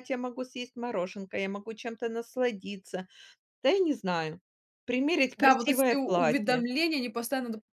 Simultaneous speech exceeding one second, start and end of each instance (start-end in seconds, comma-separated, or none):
5.4-6.7